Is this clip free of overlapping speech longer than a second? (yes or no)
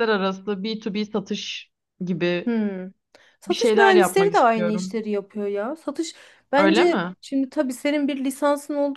no